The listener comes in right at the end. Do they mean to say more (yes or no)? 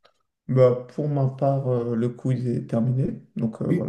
yes